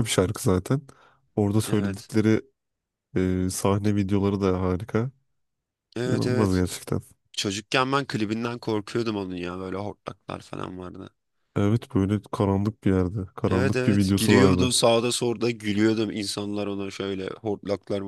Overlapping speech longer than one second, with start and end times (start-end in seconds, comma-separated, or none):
13.5-14.7